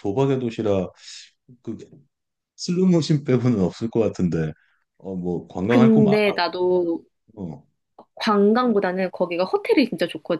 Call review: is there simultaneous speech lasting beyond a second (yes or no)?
no